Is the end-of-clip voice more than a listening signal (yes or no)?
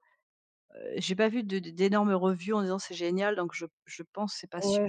yes